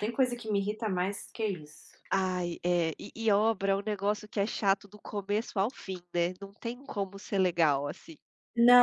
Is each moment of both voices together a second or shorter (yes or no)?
yes